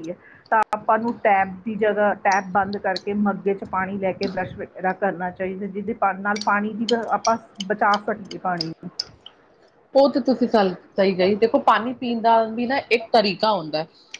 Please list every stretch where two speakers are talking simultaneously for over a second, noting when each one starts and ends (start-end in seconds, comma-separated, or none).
none